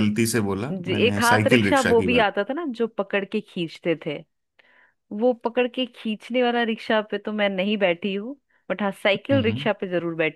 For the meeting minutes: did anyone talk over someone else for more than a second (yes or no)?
yes